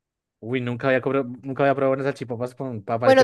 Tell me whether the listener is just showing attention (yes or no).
no